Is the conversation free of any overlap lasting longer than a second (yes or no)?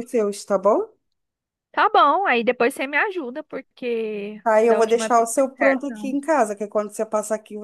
no